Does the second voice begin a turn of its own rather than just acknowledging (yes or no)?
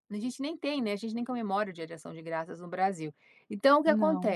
no